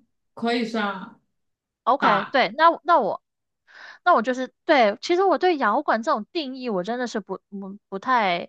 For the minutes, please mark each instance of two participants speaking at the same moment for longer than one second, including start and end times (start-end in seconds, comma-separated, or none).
none